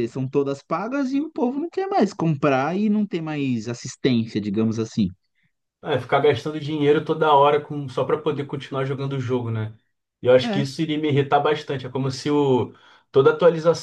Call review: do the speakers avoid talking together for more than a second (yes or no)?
yes